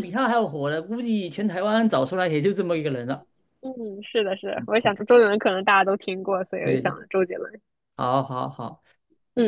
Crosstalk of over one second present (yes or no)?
no